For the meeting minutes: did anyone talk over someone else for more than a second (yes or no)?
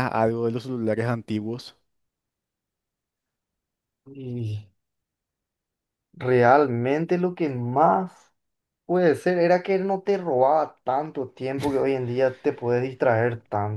no